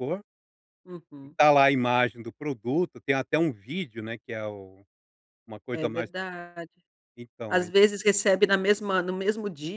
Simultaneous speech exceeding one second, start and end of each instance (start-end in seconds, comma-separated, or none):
none